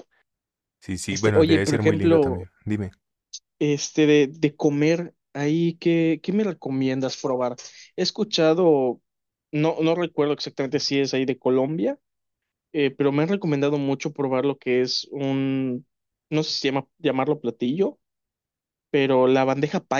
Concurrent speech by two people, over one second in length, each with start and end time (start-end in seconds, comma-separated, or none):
1.1-2.5